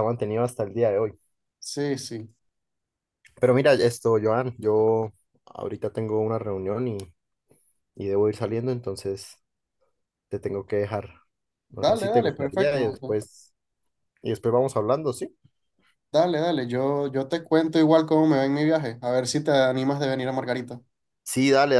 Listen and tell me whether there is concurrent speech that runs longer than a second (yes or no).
yes